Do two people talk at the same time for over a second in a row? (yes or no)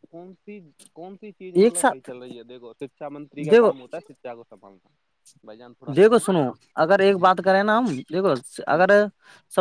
no